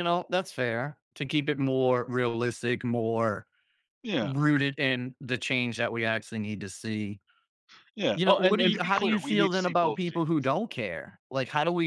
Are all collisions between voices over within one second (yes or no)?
no